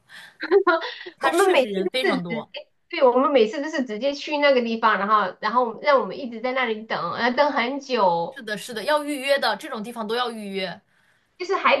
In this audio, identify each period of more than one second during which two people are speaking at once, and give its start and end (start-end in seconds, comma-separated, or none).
1.2-2.5